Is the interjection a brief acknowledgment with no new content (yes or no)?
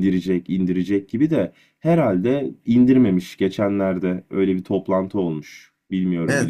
no